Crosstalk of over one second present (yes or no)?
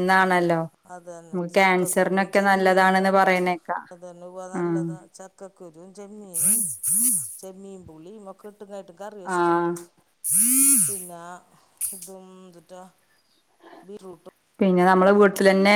yes